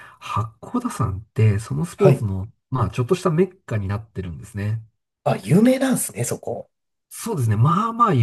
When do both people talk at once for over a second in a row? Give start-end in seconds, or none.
none